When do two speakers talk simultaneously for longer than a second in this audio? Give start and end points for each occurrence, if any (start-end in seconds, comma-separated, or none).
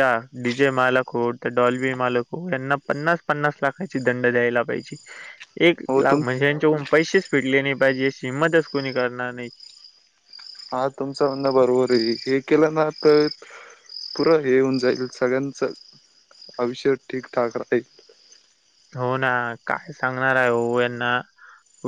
none